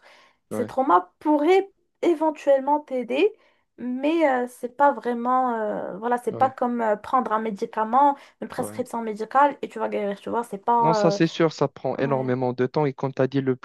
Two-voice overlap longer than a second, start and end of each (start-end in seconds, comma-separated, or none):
none